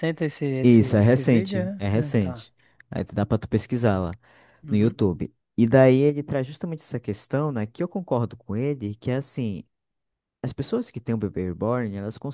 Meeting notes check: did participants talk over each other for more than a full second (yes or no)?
yes